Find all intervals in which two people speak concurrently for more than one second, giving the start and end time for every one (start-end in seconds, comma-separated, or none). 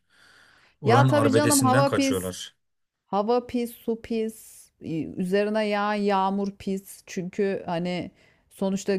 0.8-2.3